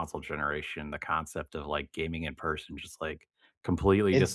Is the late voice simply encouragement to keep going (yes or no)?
no